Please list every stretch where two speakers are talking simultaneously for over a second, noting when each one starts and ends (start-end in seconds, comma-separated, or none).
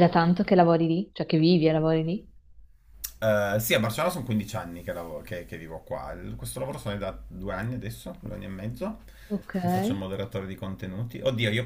none